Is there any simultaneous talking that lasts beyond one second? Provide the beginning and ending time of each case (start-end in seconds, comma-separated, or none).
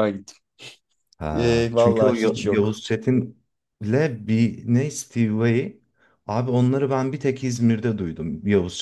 1.3-2.8